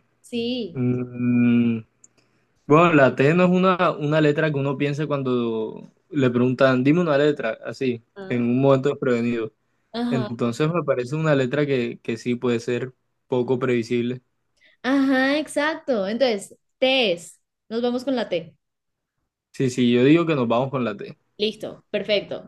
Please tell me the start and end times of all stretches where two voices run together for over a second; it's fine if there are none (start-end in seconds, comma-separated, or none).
none